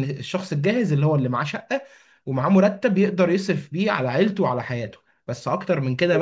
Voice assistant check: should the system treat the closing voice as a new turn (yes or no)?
no